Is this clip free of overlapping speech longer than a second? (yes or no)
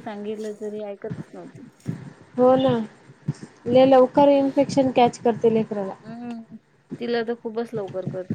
yes